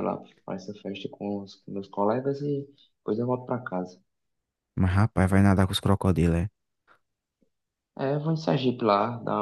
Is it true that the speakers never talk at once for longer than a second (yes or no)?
yes